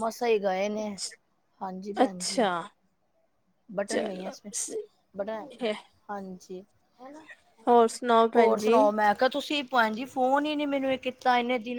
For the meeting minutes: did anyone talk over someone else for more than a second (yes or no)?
no